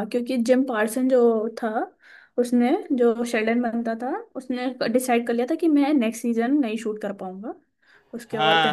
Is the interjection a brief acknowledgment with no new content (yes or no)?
no